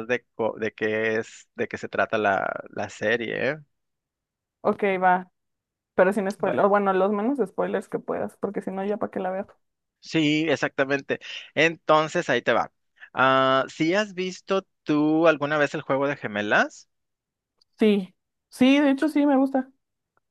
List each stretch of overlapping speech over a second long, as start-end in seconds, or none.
none